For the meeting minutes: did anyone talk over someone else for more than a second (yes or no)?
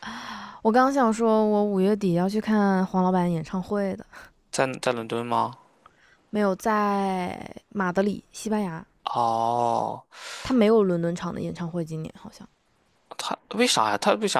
no